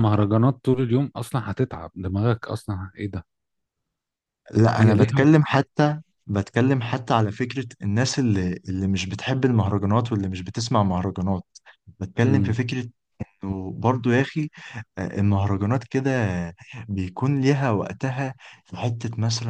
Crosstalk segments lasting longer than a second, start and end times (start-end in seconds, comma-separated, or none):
none